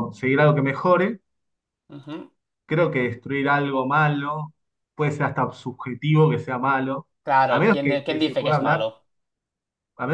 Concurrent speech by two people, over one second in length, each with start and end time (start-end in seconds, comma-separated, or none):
7.5-8.9